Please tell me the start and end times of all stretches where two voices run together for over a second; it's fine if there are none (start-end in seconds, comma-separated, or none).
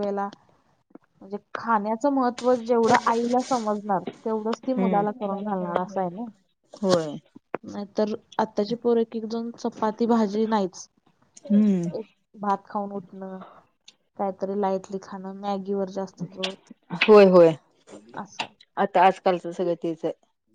4.8-6.2